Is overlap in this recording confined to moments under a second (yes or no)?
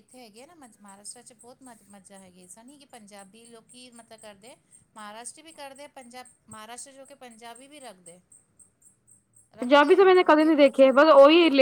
no